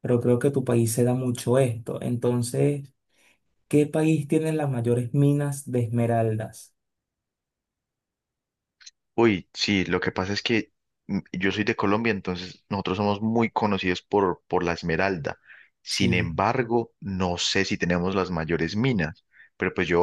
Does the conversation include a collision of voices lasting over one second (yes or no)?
no